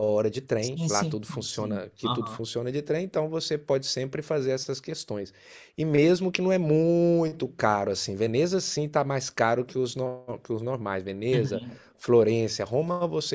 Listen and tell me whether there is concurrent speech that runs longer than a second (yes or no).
yes